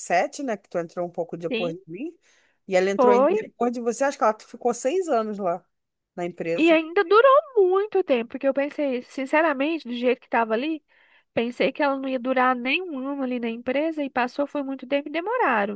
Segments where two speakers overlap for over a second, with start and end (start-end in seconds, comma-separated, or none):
none